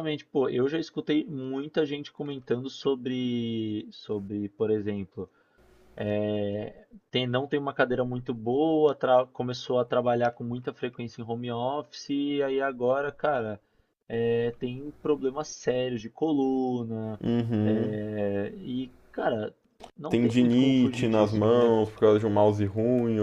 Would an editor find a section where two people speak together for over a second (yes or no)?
yes